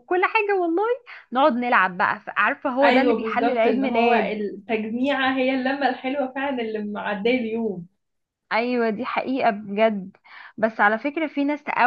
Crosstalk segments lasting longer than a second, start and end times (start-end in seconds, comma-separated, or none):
2.8-4.4